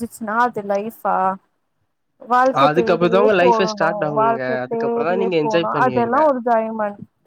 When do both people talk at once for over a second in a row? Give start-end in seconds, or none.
4.2-6.2